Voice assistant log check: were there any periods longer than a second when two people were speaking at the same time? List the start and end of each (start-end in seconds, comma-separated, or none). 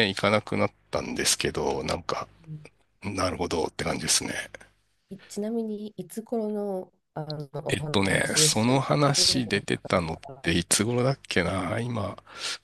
7.7-9.6